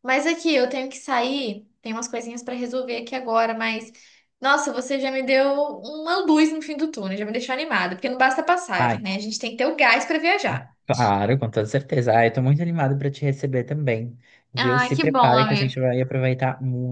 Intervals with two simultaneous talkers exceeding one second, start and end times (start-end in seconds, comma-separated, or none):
14.6-15.8